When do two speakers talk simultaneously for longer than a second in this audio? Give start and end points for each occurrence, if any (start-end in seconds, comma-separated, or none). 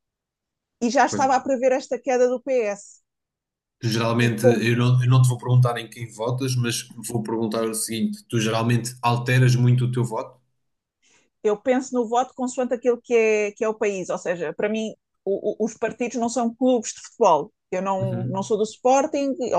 none